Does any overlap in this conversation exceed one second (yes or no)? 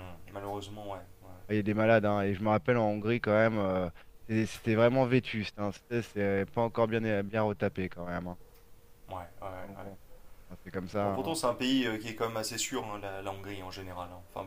no